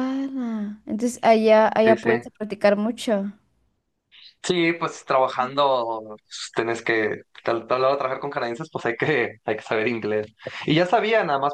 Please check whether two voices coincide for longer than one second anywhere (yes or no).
no